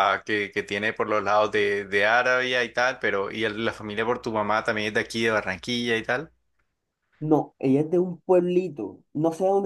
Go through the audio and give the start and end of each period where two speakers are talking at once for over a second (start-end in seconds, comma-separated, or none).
none